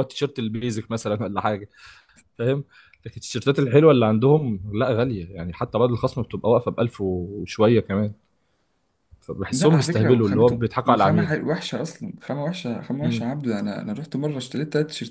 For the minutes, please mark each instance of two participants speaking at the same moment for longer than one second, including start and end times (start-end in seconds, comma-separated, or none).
9.5-11.4